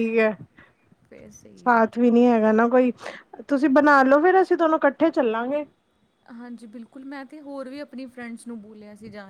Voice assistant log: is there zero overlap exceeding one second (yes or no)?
yes